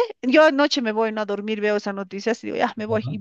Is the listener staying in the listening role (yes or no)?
yes